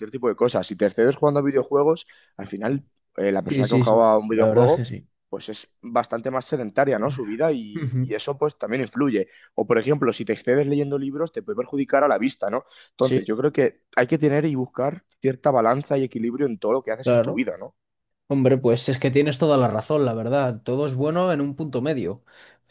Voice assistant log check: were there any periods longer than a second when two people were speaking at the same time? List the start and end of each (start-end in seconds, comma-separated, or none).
3.5-4.8